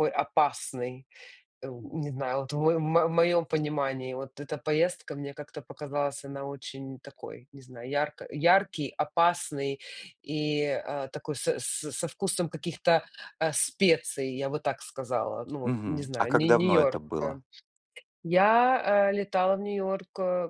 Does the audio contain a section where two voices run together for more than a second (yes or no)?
yes